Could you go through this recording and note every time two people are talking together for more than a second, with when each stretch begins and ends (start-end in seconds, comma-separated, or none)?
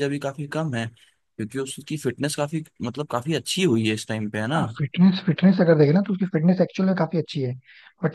none